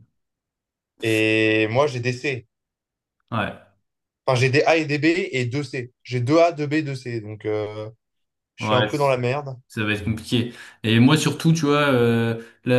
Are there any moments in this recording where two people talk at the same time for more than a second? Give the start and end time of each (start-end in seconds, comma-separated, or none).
none